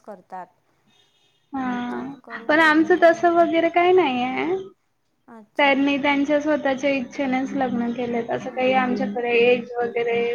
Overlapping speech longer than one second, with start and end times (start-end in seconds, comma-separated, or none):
1.9-3.3